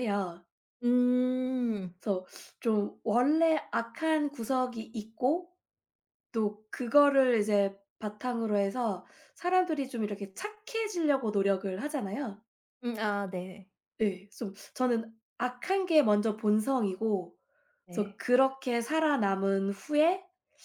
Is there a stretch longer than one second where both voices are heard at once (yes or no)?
no